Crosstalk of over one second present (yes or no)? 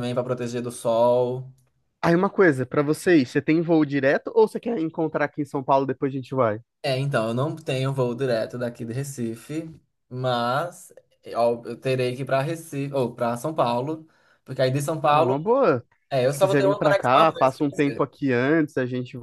yes